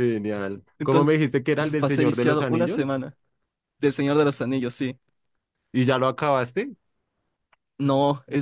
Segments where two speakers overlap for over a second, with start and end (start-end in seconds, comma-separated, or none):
1.8-3.0